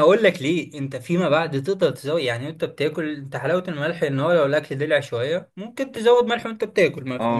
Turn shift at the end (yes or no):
no